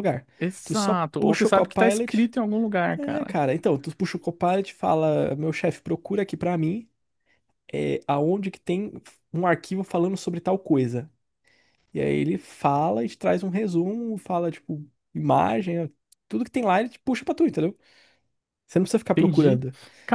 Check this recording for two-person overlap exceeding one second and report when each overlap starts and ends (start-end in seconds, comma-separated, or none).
0.6-2.3